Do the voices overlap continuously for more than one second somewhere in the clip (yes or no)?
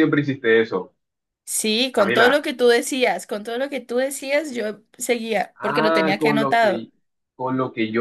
yes